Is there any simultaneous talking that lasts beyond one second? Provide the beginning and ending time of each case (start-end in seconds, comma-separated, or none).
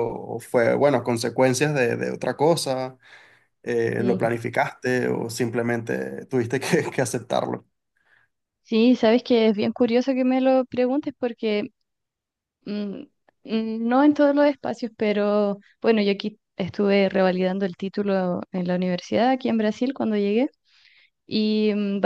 none